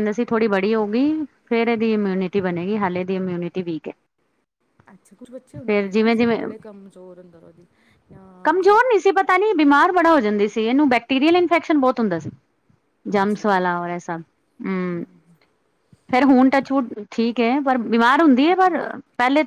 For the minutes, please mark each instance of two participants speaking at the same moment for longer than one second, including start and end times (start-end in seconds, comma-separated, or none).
none